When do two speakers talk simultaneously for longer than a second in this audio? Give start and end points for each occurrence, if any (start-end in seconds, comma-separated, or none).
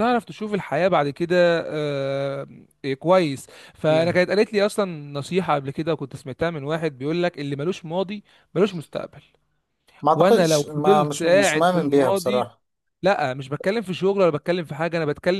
10.2-12.5